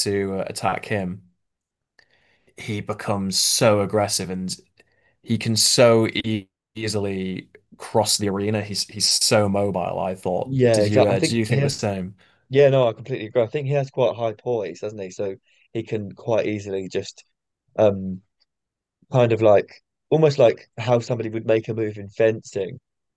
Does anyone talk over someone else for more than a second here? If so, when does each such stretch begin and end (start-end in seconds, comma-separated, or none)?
10.4-11.8